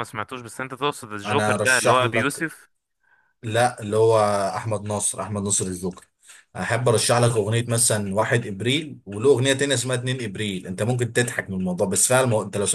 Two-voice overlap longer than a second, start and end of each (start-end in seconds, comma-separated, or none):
1.2-2.5